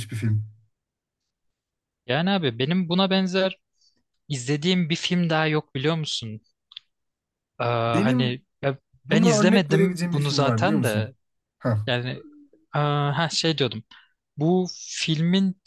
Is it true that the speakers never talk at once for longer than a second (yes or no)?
no